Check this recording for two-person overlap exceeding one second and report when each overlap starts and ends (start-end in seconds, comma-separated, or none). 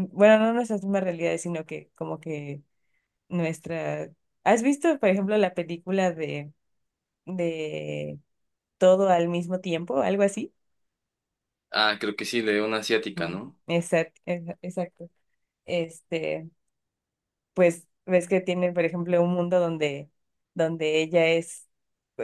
none